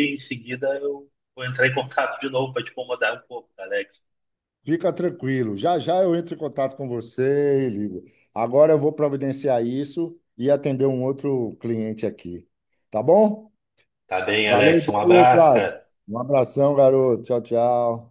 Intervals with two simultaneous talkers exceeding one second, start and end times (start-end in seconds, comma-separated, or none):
14.4-15.8